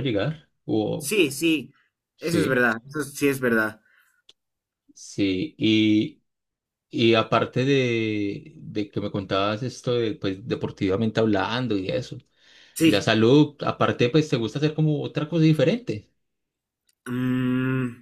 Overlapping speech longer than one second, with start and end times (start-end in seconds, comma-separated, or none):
none